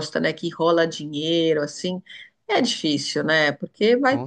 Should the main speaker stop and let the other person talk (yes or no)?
no